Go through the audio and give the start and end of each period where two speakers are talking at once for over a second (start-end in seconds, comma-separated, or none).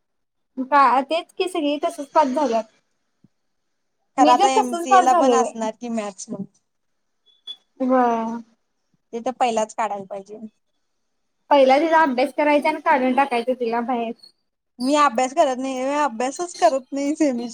4.2-5.7